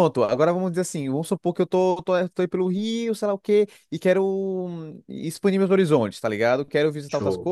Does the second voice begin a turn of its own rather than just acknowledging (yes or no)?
no